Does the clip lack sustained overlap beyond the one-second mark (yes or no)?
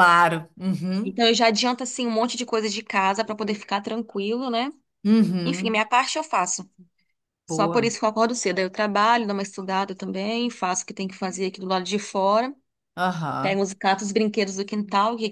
yes